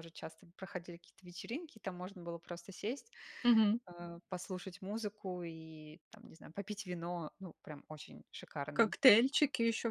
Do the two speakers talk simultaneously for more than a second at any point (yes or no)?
no